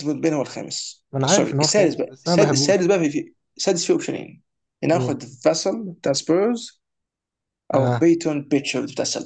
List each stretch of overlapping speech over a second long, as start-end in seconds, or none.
1.1-2.8